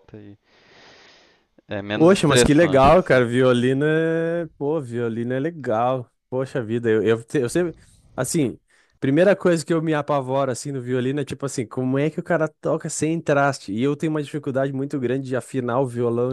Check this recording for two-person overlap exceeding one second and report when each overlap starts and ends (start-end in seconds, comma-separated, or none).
1.9-3.2